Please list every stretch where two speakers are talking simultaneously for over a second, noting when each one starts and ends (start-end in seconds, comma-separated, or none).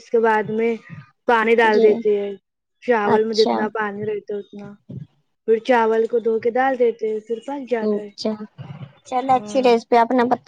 none